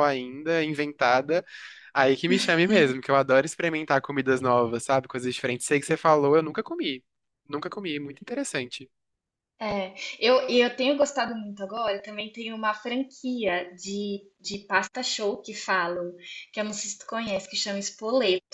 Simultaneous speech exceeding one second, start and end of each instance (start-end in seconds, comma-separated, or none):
none